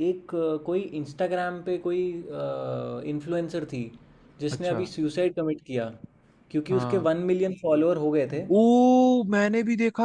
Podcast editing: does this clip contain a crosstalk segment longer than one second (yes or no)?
no